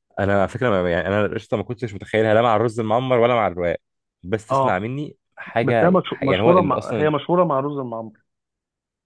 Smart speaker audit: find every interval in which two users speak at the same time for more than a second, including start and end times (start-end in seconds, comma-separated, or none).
5.6-7.1